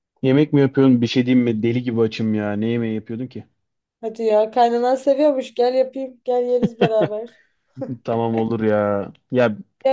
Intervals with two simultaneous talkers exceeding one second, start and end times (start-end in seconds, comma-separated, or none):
none